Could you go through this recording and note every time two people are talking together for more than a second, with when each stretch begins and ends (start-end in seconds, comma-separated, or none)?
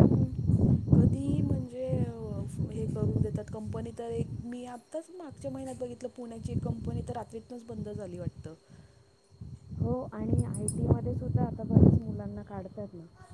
none